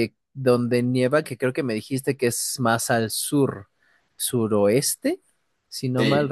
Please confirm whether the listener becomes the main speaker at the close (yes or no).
yes